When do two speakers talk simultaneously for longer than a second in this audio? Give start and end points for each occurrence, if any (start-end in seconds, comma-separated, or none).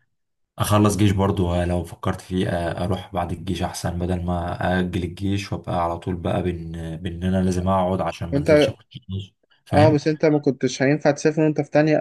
none